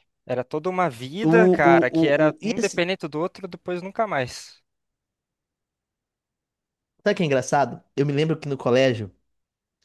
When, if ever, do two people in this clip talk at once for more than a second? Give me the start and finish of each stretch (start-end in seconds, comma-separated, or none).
1.2-2.8